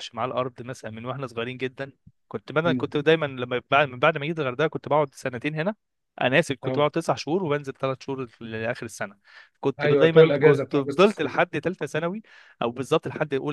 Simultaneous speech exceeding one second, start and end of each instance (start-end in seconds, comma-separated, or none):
9.8-11.3